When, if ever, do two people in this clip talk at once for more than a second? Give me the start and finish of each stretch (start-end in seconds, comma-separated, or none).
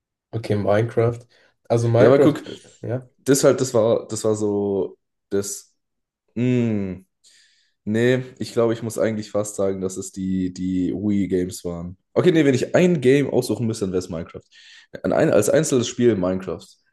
none